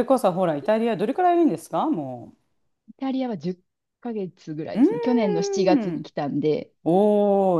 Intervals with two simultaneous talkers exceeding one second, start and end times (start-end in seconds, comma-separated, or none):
4.7-6.1